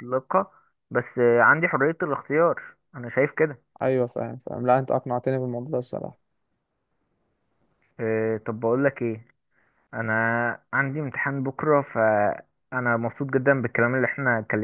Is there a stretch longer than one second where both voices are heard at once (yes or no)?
no